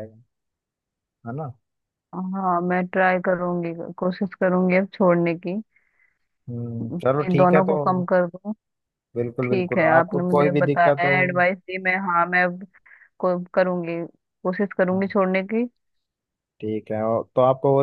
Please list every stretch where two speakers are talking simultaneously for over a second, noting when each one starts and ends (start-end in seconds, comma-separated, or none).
9.4-11.2